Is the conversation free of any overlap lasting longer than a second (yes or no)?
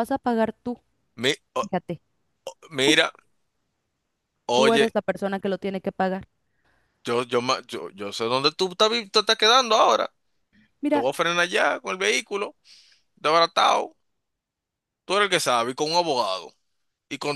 yes